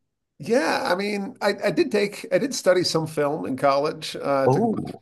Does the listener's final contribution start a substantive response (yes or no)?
no